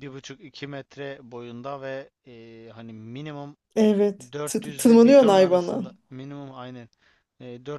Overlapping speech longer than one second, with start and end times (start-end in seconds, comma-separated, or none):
4.3-5.8